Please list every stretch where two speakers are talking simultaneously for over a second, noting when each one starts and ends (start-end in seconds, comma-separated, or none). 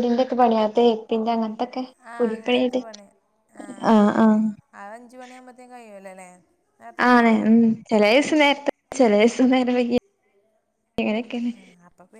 none